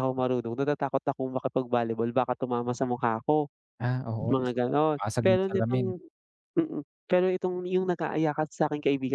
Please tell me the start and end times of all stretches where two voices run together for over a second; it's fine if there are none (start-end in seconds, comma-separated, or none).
4.2-5.9